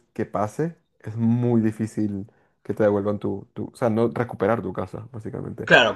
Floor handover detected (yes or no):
yes